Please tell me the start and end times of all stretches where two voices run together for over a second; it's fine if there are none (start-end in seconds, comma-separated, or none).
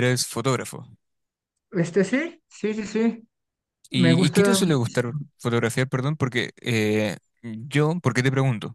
3.9-5.2